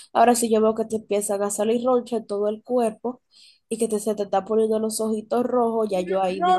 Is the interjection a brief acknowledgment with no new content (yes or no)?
no